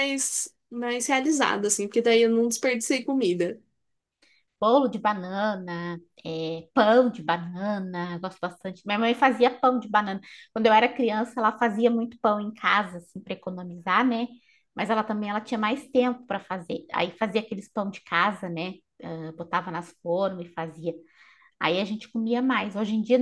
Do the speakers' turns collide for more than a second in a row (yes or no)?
no